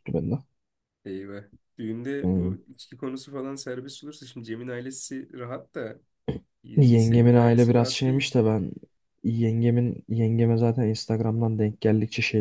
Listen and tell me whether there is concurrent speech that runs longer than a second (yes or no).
yes